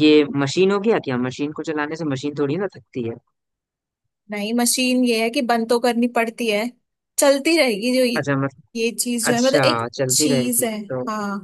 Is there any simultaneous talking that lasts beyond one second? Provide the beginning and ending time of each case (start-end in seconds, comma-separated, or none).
9.3-10.7